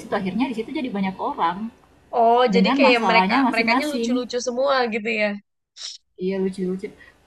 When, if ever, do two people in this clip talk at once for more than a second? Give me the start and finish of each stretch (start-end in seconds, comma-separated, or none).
2.5-4.2